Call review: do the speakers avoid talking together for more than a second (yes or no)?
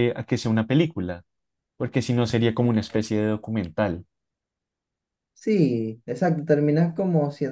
yes